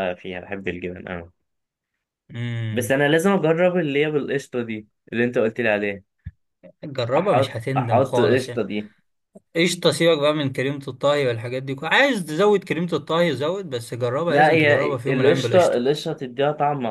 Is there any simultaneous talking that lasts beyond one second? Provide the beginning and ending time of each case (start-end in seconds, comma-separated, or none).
7.2-8.6, 14.3-15.8